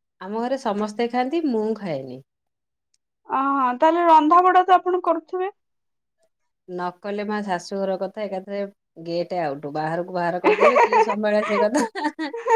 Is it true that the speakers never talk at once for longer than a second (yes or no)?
yes